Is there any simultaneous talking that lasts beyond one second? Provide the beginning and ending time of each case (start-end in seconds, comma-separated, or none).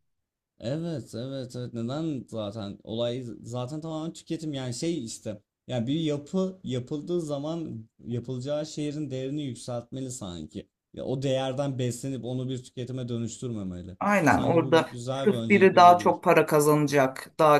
14.0-16.2